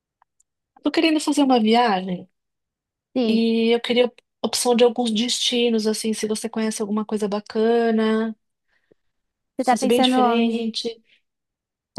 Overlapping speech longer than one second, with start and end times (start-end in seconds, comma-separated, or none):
9.6-10.8